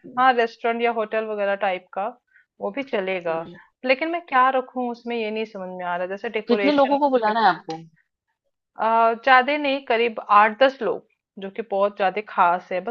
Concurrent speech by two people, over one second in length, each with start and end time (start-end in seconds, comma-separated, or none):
none